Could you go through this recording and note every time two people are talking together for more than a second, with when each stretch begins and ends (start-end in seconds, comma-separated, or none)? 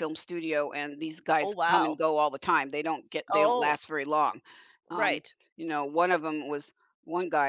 none